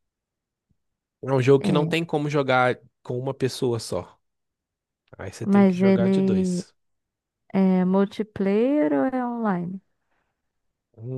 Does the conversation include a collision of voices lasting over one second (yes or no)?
yes